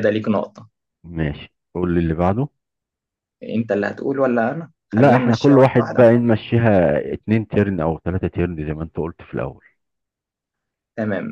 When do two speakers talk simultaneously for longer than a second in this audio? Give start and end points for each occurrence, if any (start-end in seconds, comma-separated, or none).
4.9-6.2